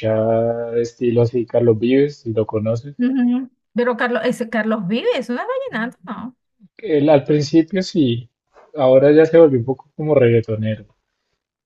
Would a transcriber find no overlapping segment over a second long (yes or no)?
yes